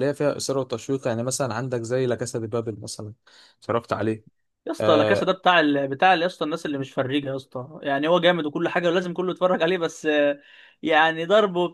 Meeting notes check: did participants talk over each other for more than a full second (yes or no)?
no